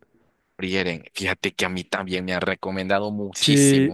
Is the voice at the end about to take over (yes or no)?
yes